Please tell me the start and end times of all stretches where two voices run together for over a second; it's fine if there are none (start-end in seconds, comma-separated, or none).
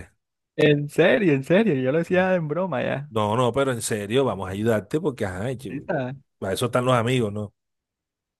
none